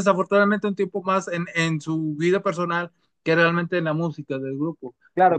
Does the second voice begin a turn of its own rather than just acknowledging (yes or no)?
yes